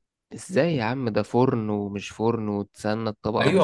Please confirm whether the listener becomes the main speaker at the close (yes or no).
yes